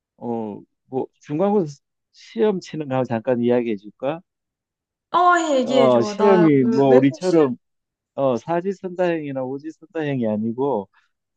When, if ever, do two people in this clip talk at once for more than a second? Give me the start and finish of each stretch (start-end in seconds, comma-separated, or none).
5.7-7.5